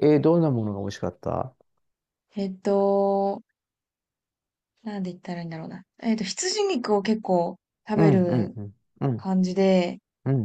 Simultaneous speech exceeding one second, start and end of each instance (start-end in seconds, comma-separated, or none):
none